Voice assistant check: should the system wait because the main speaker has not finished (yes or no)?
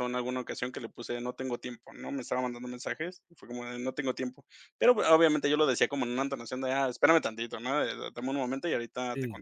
yes